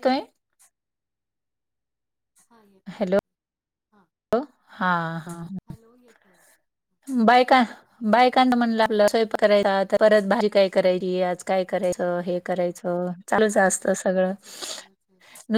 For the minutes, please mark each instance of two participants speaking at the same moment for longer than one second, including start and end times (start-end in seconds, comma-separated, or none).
none